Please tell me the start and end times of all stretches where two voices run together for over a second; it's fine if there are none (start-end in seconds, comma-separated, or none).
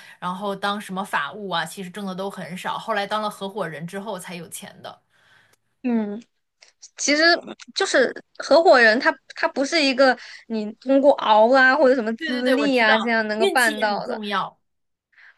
12.2-14.2